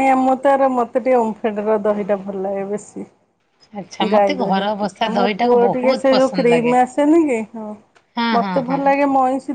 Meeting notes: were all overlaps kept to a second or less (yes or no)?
no